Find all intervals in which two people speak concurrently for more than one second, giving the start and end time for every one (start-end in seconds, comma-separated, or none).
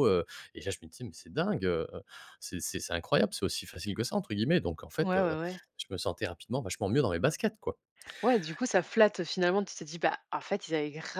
none